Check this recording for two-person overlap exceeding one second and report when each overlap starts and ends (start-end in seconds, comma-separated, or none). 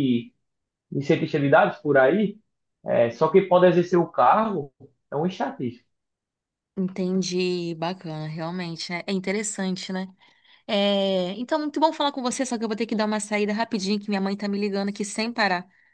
none